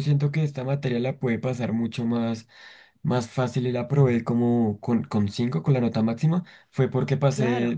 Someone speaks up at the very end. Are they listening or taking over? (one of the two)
listening